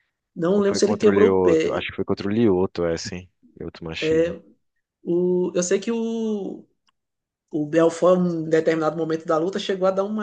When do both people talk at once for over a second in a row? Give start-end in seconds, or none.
0.6-1.9